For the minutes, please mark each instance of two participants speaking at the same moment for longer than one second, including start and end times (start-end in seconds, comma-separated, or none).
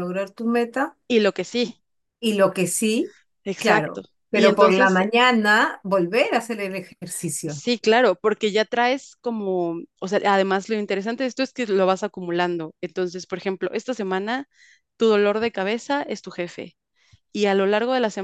3.6-5.0